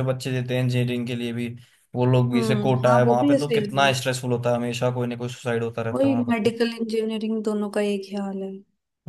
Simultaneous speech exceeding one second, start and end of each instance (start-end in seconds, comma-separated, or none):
2.3-3.9